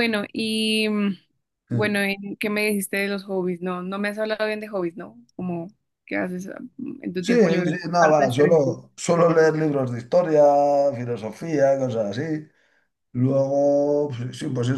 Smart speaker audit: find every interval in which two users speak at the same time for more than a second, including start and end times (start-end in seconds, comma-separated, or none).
7.2-8.8